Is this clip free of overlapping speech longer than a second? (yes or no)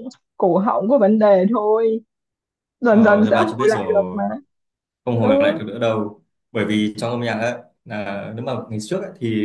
no